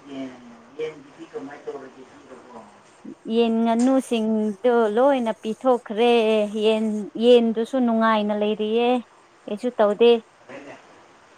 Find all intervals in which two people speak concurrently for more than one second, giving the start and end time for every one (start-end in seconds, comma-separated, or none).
none